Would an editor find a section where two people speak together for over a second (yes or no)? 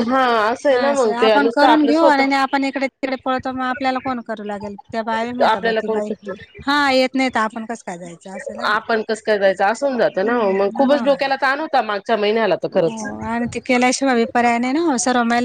yes